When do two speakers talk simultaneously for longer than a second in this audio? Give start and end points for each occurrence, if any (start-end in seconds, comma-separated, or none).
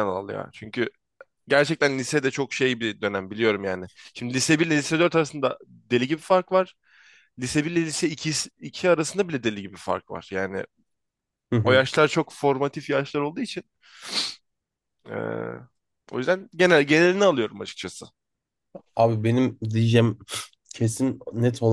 none